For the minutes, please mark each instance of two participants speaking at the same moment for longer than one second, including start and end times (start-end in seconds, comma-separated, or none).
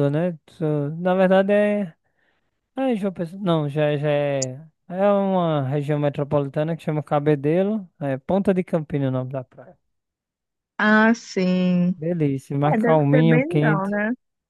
12.7-14.0